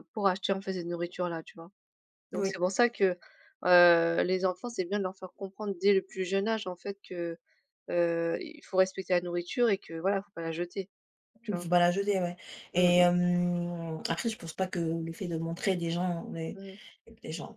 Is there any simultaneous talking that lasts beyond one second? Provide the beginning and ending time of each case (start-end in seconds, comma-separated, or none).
none